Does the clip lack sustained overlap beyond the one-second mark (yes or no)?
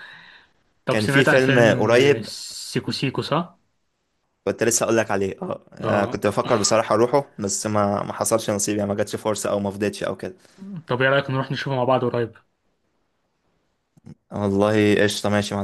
no